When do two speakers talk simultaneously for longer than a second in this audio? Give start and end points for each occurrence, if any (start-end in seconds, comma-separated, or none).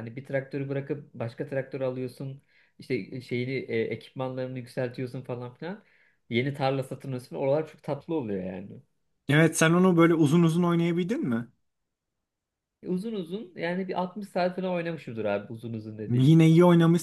none